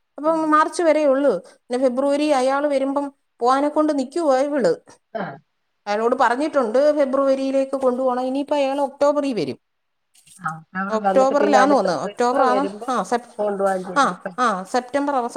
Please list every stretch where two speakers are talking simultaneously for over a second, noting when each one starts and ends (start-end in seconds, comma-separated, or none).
11.0-12.9